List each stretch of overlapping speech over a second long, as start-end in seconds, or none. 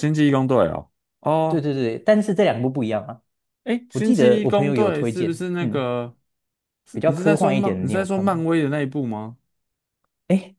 3.9-5.9, 6.9-8.4